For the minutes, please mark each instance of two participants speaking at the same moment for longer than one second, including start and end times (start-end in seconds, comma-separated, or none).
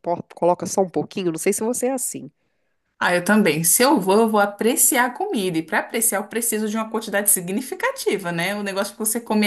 none